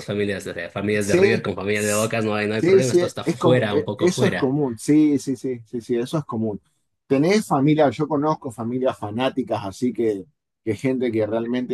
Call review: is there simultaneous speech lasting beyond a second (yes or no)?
yes